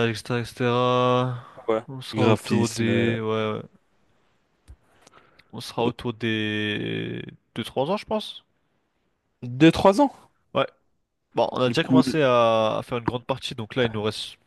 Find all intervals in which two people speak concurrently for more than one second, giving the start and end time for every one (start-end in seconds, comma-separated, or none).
1.9-3.1